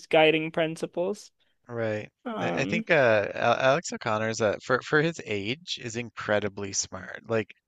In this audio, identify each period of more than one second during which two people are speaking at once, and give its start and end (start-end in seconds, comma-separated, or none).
none